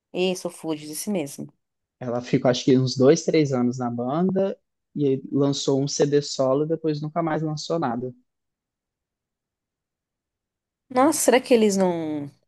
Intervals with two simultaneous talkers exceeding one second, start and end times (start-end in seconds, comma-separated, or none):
none